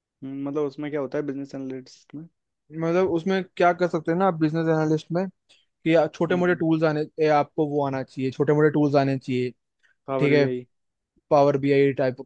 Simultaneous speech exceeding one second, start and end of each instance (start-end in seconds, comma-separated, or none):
none